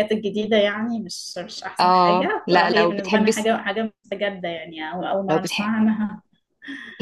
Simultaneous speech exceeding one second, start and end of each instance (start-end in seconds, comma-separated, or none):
1.8-3.5